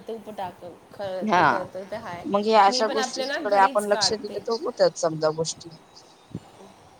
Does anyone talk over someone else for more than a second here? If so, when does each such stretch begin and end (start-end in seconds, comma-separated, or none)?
2.7-4.4